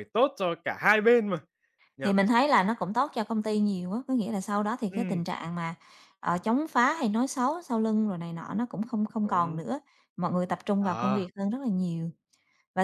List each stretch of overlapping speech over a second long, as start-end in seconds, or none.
none